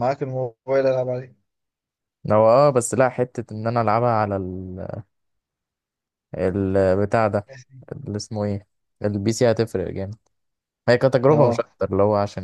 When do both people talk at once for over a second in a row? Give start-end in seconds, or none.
none